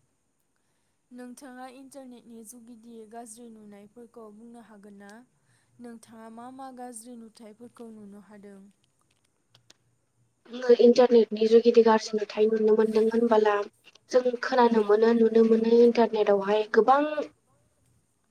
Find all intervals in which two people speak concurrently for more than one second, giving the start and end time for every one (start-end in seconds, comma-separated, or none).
none